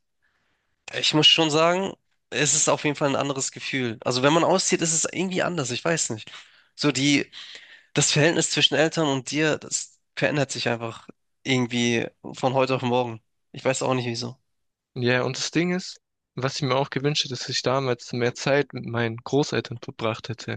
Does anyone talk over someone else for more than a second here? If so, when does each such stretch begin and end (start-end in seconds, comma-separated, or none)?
none